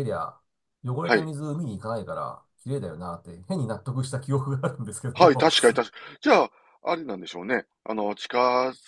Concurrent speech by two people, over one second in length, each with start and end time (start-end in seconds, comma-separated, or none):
none